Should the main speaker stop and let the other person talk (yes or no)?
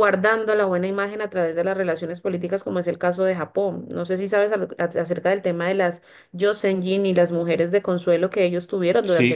yes